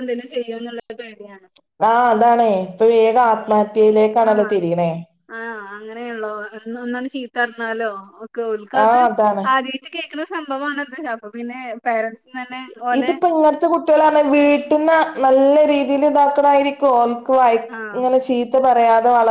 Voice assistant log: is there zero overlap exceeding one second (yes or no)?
yes